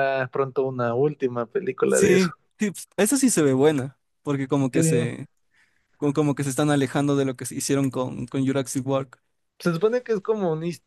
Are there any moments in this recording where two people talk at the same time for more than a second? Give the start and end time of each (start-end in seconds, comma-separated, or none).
none